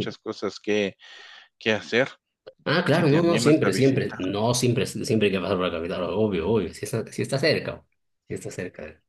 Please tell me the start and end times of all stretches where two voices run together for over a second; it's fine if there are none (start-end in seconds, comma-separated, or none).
2.9-4.2